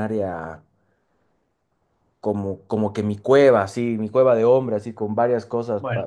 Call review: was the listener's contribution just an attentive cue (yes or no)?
yes